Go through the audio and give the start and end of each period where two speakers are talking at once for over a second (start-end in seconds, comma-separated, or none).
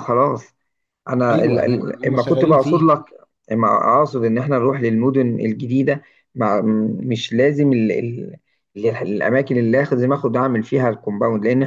1.3-2.9